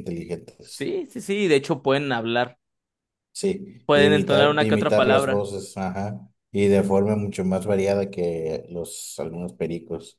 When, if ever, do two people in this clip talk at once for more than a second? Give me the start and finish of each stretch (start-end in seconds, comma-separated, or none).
3.9-5.5